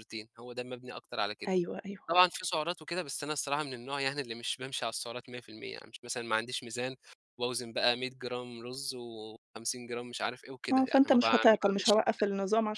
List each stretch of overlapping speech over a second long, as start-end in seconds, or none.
10.7-12.2